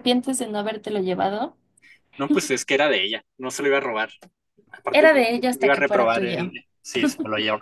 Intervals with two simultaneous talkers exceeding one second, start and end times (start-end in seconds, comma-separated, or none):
4.9-6.5